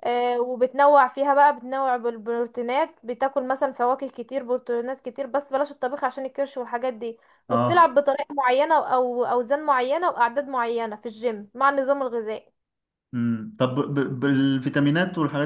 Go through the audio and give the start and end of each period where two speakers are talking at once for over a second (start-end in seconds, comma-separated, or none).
none